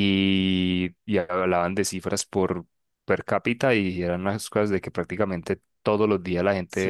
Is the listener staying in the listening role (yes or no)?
yes